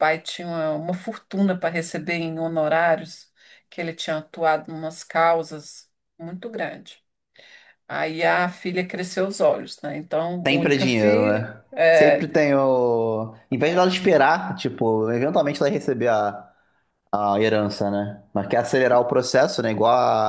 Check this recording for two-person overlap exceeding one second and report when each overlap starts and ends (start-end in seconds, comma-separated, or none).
10.4-12.3